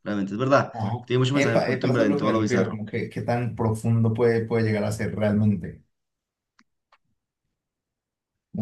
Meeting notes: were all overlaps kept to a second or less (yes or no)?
no